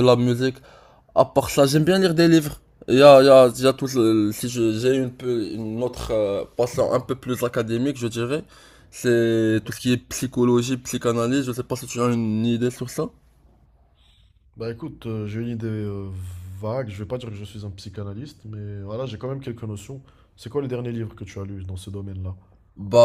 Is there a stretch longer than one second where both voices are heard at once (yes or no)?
no